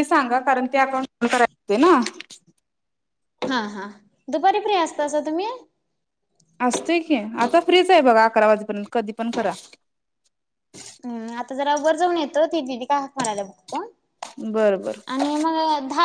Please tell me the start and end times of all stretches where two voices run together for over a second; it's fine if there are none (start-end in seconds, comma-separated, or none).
none